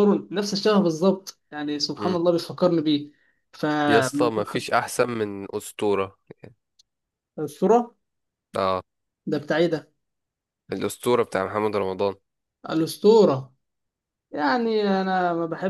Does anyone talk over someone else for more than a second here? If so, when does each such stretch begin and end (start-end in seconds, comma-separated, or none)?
none